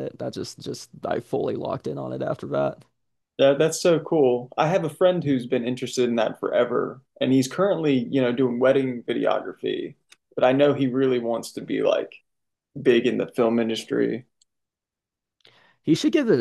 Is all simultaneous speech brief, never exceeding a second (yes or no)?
yes